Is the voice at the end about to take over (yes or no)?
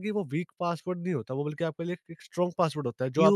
yes